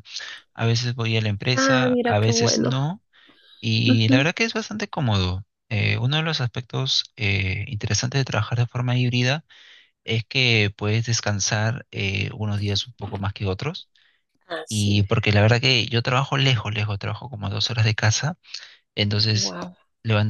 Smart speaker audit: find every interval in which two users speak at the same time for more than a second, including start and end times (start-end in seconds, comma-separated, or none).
1.5-2.7